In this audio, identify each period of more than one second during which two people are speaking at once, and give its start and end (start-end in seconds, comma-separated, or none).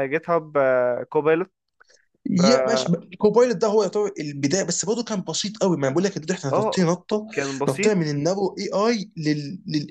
none